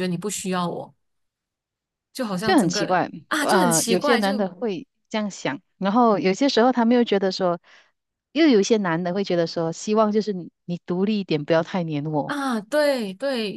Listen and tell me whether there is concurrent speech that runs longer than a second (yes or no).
yes